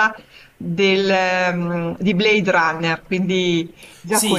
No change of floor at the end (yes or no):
no